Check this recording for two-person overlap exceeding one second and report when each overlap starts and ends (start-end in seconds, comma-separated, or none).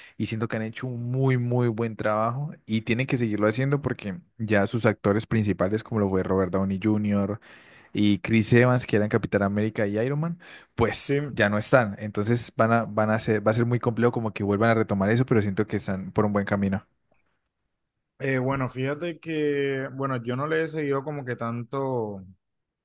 none